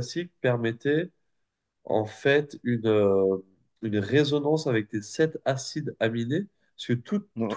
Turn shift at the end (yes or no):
no